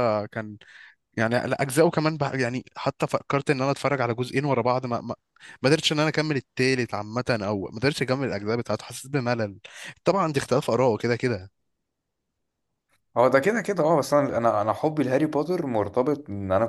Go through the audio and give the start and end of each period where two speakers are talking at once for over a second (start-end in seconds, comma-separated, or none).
none